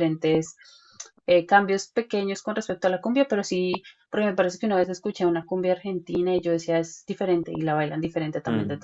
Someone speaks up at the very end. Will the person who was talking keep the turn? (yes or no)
no